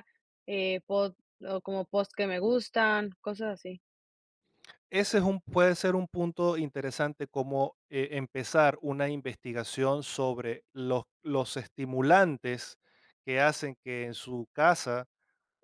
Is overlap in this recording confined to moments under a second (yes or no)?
yes